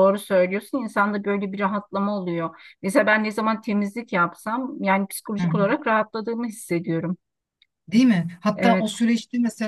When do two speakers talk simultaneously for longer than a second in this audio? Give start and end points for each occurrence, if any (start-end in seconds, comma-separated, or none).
none